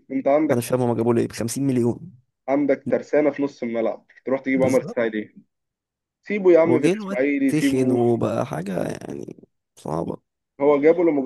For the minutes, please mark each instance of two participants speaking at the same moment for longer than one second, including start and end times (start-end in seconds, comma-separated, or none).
6.6-8.0